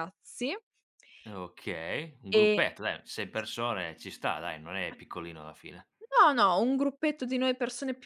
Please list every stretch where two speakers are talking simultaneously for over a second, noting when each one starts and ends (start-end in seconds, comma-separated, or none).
none